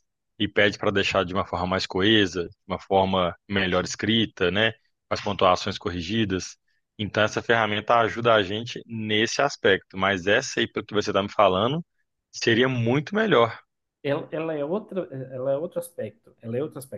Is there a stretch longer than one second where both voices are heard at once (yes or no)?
no